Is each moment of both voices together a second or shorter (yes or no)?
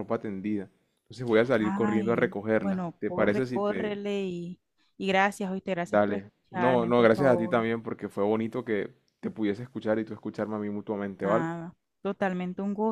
no